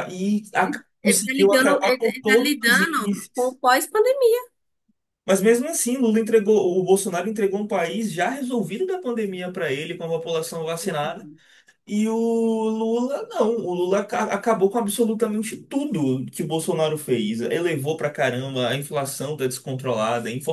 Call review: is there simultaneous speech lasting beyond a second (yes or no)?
yes